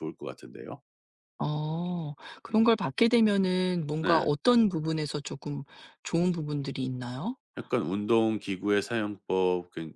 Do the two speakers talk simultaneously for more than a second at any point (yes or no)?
no